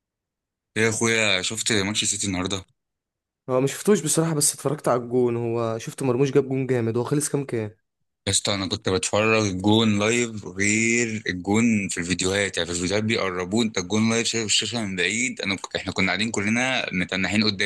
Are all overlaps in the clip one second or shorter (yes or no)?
yes